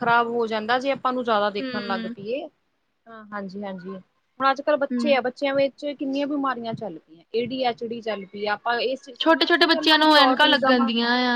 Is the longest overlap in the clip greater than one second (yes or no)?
yes